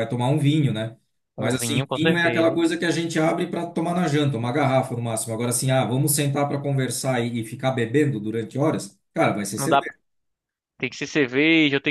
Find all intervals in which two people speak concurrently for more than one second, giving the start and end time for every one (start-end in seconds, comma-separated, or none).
1.4-2.6